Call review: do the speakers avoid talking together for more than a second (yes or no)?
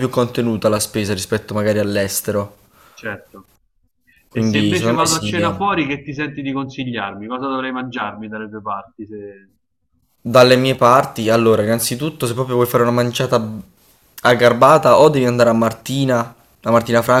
no